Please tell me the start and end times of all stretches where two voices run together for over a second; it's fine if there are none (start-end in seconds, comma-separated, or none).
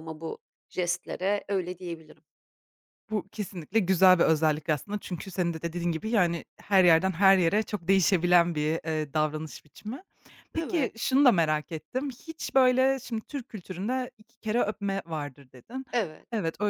none